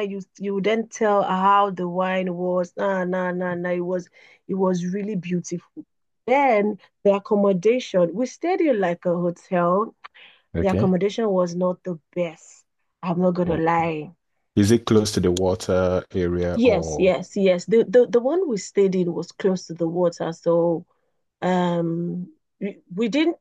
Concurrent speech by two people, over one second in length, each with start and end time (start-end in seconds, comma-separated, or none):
none